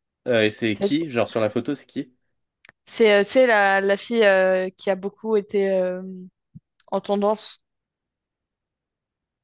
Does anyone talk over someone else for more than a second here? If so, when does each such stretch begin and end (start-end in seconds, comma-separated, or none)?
none